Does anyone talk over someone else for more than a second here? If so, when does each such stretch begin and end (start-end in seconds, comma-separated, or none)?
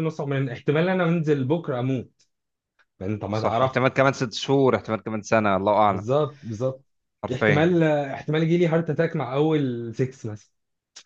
none